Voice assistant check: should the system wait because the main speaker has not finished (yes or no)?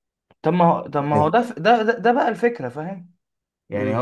yes